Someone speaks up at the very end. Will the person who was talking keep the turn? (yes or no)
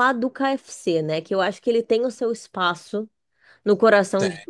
yes